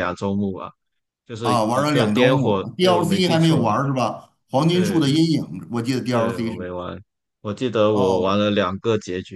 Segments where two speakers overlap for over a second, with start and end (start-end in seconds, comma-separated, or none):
1.4-3.7